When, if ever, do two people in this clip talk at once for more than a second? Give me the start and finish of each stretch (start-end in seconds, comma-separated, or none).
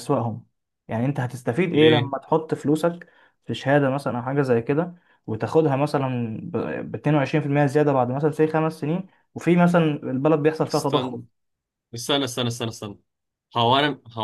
none